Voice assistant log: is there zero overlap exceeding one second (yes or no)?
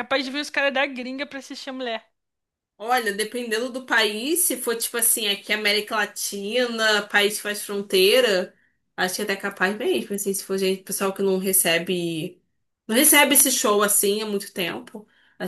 yes